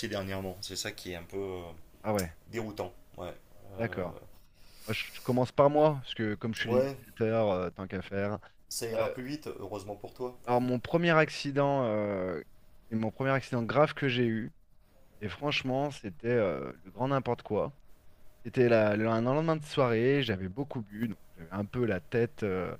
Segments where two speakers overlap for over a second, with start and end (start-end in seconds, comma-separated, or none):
none